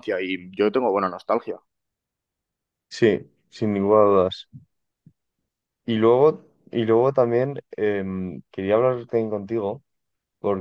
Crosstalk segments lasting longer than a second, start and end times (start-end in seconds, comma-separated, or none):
none